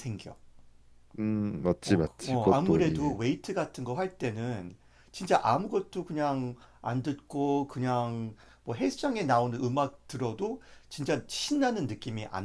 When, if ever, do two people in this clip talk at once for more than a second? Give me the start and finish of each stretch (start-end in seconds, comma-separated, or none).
1.9-3.1